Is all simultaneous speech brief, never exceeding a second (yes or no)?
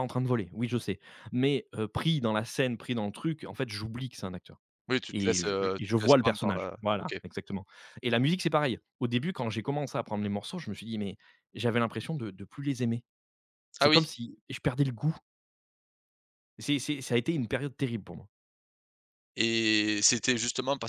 no